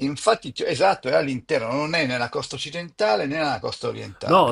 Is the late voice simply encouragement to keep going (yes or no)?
no